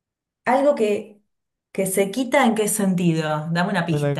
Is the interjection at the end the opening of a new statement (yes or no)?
yes